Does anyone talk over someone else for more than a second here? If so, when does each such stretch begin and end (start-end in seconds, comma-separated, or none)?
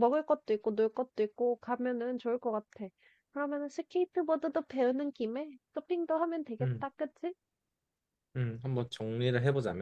none